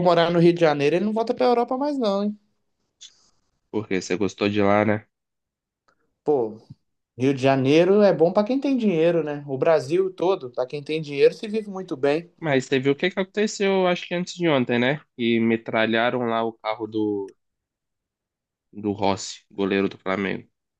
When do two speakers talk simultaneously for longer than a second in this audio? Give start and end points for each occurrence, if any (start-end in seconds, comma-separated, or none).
none